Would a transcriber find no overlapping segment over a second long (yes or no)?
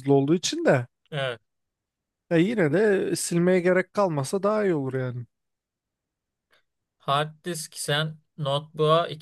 yes